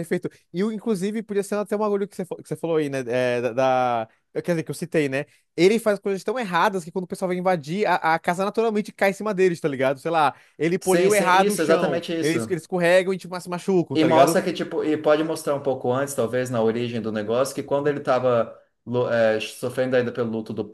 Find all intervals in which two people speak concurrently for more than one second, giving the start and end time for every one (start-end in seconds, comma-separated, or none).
10.8-12.6